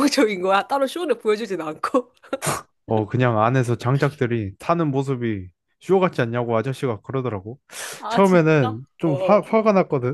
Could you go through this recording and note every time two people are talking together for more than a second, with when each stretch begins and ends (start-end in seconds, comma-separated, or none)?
8.1-9.5